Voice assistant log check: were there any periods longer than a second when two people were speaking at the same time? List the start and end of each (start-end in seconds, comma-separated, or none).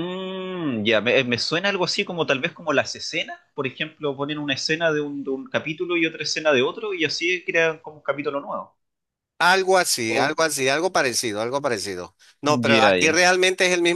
none